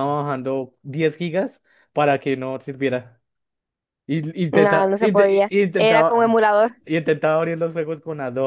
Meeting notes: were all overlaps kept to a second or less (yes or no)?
no